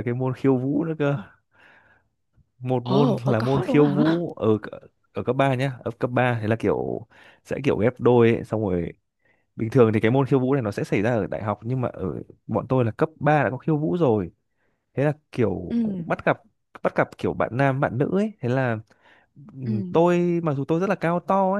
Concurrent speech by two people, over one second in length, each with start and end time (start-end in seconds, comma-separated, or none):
2.8-4.2